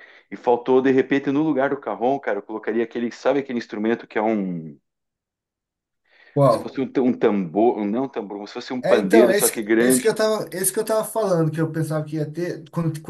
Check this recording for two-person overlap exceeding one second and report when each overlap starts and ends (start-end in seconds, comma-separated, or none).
8.8-10.1